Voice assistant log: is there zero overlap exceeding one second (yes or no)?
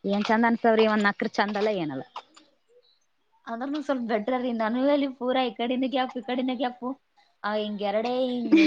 yes